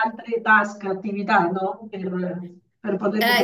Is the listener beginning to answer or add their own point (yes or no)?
yes